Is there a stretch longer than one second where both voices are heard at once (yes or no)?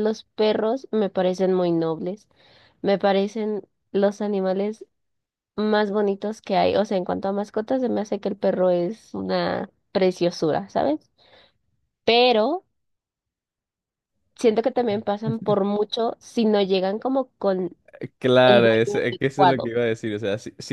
yes